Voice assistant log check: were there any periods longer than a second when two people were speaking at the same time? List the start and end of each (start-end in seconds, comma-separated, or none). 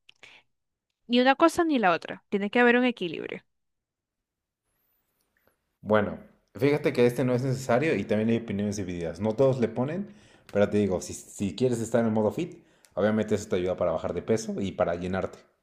none